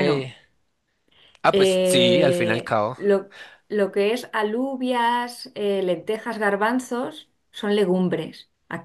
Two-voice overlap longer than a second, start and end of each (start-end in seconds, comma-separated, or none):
1.5-3.0